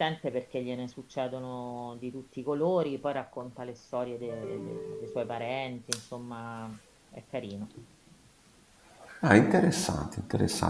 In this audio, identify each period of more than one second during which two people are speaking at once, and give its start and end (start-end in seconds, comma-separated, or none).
none